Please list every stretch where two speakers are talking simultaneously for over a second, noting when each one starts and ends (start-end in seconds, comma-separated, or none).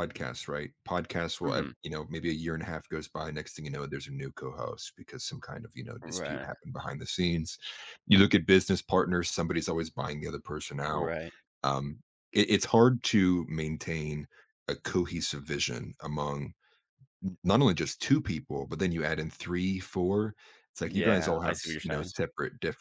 20.8-22.1